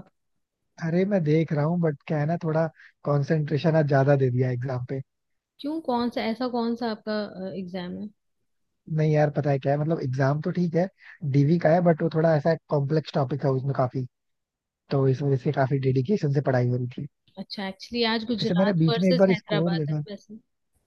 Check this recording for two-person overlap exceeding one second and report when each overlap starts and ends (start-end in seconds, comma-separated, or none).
18.4-20.0